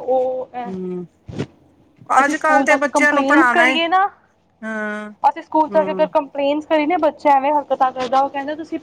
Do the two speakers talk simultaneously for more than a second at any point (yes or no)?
yes